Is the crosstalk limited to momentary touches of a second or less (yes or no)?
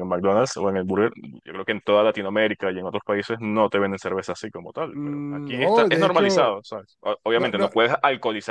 no